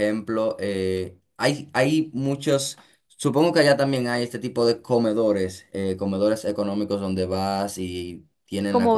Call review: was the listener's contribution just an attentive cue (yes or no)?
no